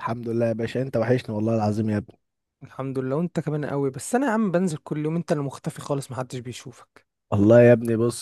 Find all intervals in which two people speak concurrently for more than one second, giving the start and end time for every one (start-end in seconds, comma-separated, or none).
none